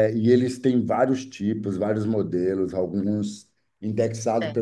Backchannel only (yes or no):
yes